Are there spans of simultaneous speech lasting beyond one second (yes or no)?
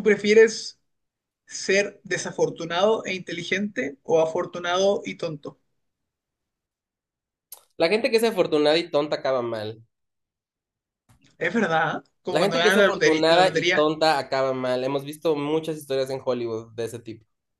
yes